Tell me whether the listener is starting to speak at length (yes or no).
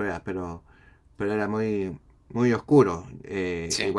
no